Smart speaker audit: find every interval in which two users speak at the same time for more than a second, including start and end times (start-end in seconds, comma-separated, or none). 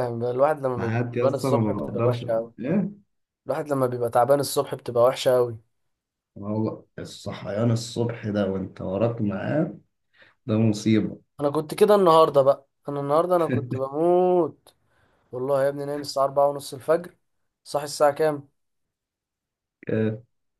0.8-2.5